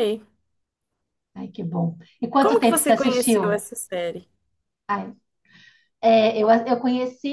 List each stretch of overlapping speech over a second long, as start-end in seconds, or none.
2.4-3.6